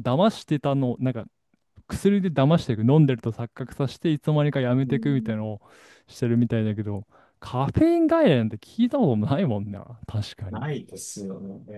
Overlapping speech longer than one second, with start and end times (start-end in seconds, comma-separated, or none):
none